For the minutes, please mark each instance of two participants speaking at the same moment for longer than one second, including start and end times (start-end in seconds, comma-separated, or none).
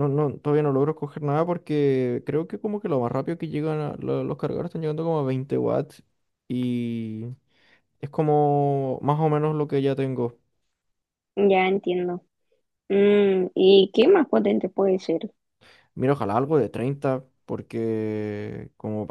none